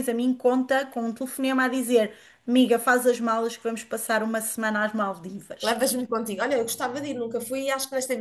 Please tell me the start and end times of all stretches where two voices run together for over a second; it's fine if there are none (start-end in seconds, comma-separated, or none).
none